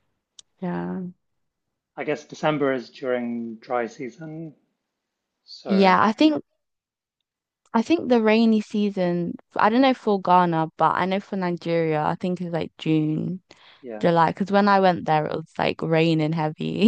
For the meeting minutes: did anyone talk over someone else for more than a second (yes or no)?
no